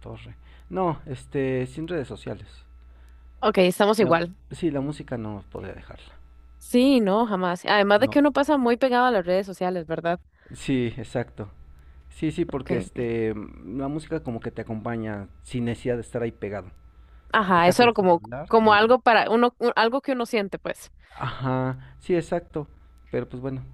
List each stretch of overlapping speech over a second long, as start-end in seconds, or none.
17.5-18.9